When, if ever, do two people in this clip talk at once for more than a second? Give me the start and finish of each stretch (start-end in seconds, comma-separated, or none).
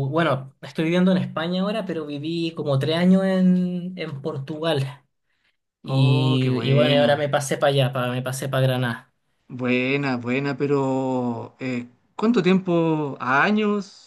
5.9-7.3